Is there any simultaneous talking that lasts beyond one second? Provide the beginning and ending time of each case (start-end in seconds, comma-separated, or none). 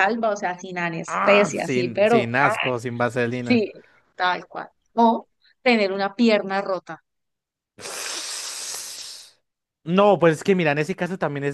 1.1-2.5